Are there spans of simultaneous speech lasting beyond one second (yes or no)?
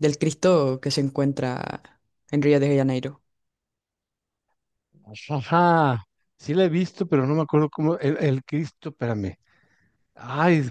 no